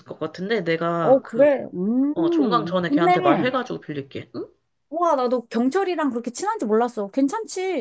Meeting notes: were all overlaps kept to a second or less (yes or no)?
no